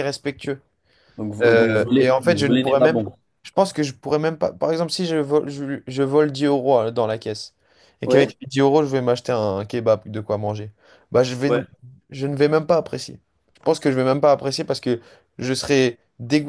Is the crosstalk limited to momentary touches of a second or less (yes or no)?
no